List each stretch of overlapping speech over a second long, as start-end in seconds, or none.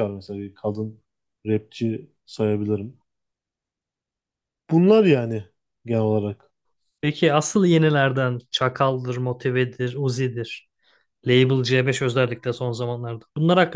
none